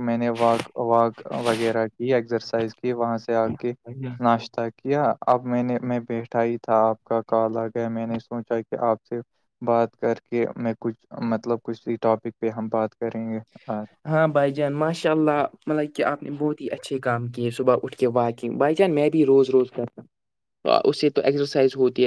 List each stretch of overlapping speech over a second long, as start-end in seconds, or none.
none